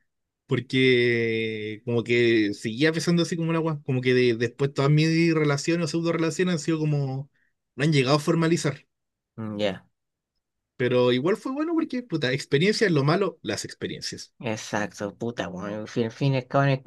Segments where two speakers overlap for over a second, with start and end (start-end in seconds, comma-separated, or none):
none